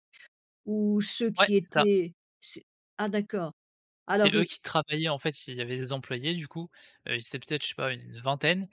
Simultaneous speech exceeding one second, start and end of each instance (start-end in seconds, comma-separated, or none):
none